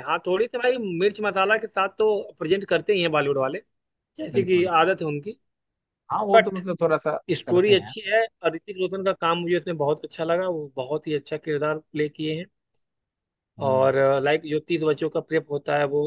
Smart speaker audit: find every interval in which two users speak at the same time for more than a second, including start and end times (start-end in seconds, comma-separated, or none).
none